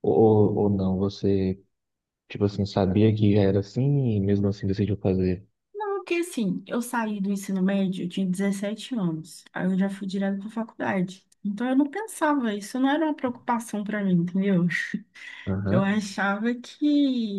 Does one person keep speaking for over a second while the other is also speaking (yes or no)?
no